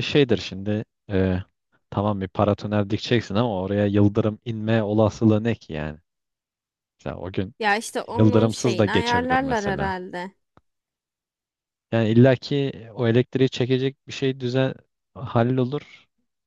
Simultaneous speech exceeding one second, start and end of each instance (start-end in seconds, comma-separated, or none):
8.1-9.9